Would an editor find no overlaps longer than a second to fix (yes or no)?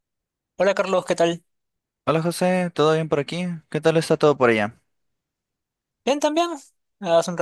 yes